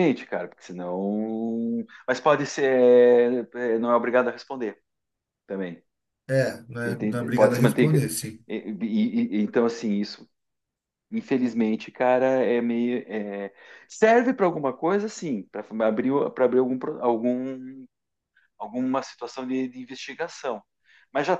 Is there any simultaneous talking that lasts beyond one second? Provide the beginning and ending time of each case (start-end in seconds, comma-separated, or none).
6.8-8.1